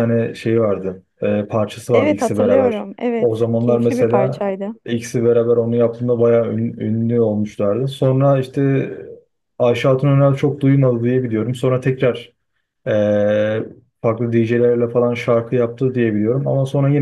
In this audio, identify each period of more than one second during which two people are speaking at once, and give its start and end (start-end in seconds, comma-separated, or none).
1.9-4.5